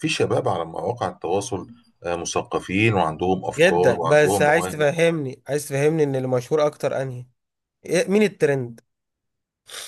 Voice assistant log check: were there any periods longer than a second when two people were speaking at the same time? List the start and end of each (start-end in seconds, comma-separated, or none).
3.6-4.8